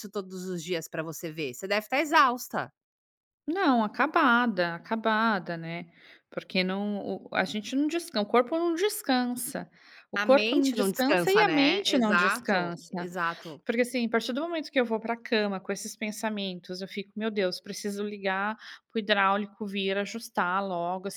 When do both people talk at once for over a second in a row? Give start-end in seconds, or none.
10.2-13.1